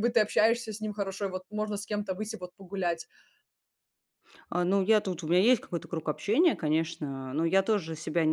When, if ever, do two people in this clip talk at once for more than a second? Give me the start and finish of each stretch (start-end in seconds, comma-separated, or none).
none